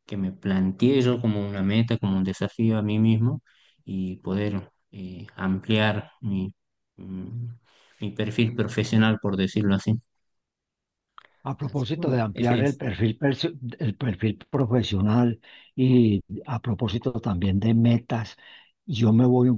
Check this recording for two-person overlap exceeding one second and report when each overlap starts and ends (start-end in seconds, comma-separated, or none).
11.6-12.8